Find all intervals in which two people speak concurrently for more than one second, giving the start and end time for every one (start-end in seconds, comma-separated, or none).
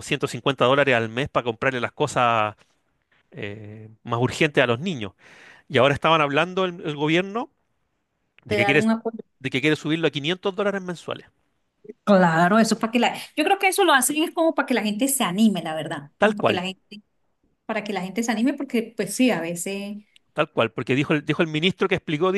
none